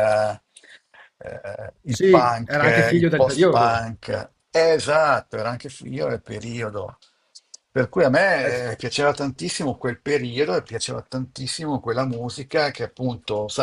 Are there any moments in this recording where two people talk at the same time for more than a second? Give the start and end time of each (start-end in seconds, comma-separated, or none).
1.9-3.9